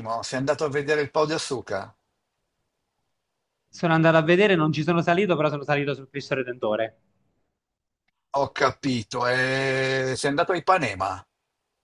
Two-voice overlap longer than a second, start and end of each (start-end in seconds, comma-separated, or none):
none